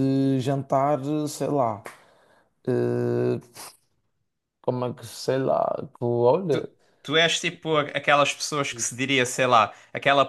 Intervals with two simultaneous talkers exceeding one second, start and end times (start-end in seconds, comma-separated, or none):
none